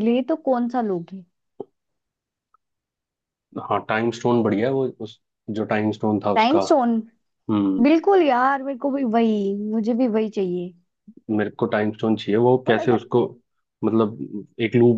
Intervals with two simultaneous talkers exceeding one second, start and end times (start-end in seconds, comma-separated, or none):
none